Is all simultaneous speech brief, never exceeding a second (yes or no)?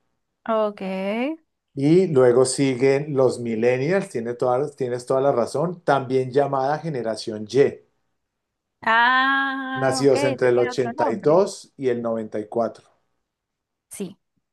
no